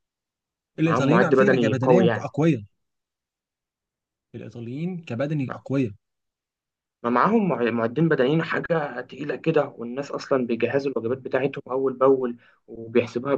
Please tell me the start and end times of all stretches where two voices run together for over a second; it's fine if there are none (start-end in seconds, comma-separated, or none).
0.8-2.3